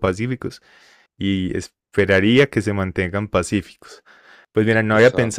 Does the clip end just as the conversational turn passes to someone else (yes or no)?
no